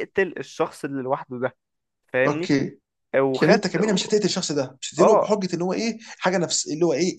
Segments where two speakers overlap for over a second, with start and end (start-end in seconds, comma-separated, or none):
none